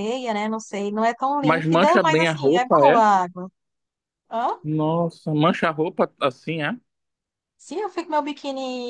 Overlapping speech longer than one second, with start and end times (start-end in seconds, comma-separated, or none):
1.4-3.0